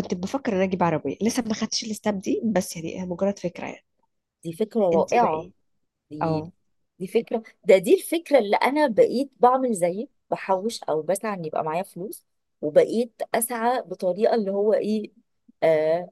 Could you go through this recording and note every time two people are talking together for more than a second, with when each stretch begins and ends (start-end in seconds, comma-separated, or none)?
none